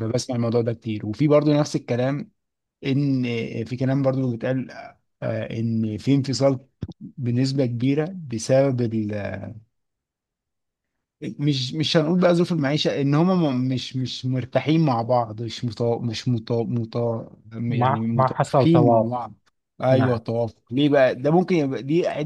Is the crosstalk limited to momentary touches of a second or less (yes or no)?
no